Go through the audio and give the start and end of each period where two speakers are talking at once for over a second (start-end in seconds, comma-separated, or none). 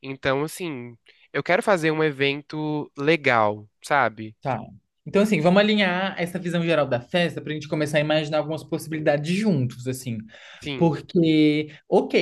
none